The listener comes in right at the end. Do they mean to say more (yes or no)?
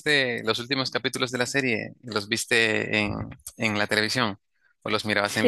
yes